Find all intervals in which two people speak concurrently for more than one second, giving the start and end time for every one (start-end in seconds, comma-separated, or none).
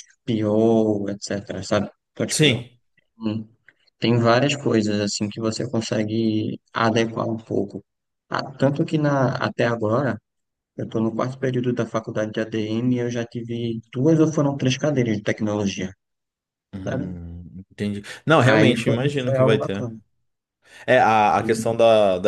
18.4-19.8